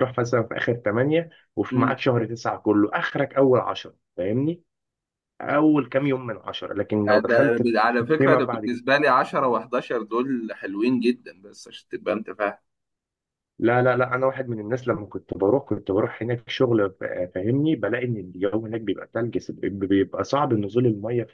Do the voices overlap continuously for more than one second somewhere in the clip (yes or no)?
yes